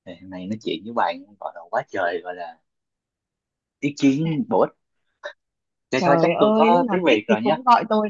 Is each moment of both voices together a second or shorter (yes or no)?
no